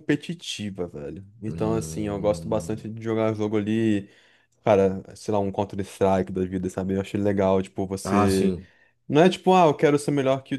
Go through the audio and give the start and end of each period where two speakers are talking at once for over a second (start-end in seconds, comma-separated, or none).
1.5-2.8